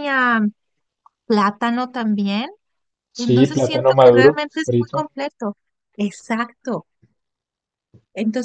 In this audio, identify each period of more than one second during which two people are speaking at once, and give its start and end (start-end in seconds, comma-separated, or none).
3.2-5.1